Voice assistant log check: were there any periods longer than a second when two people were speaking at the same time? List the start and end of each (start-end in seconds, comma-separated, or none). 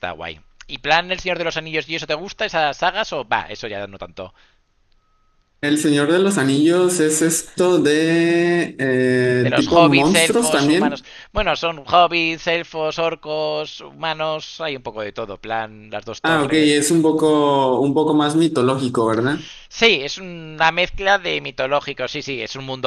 9.3-11.1